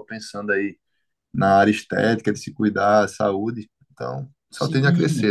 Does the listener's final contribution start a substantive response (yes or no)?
yes